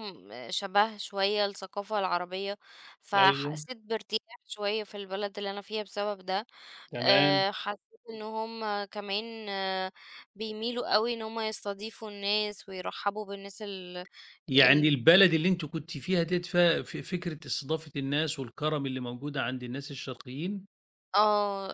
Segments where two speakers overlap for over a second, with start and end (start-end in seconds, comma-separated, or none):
none